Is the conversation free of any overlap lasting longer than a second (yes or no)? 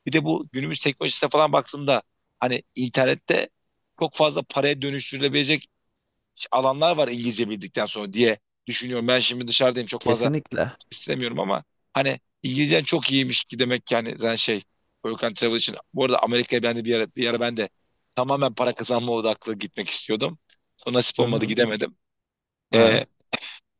yes